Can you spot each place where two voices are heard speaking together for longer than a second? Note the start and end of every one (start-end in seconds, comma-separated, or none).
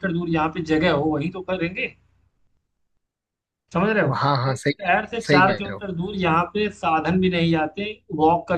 4.1-5.8